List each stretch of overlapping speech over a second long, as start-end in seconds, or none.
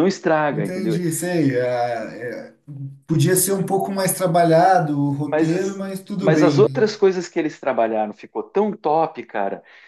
5.2-6.8